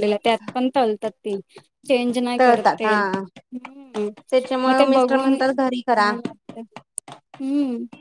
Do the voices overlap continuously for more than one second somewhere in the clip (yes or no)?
yes